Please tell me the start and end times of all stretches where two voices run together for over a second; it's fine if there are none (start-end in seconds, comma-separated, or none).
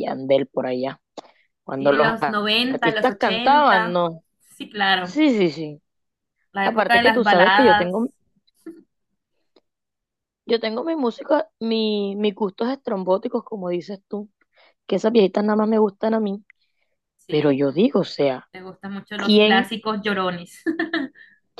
1.8-4.0, 6.6-7.9